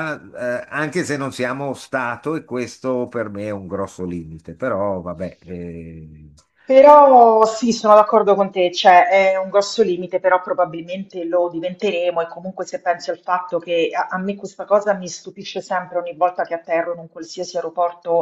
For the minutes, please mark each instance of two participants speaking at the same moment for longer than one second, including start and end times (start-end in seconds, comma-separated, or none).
none